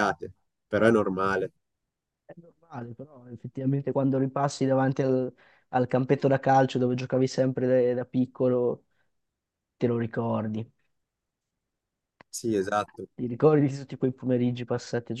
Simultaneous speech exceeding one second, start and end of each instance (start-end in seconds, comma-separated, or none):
none